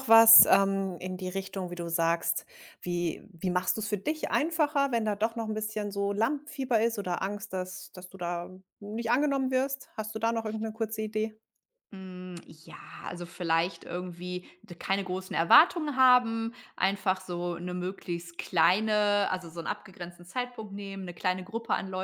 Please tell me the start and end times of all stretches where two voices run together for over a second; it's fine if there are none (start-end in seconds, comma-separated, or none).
none